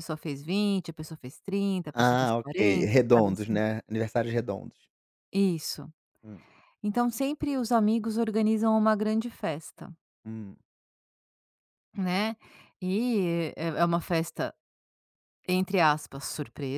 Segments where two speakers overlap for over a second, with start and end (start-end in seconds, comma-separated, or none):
1.9-3.6